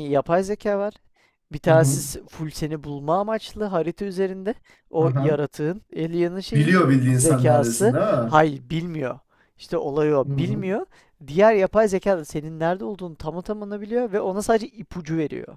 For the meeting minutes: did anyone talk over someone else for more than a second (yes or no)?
yes